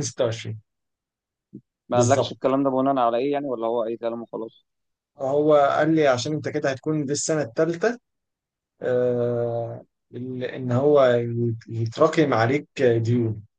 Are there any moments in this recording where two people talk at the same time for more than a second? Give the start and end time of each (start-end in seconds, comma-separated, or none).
none